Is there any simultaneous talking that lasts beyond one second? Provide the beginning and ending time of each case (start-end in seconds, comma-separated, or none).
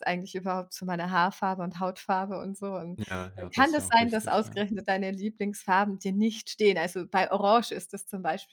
3.0-4.6